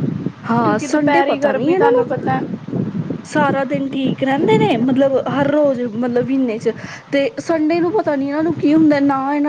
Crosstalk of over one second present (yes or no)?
yes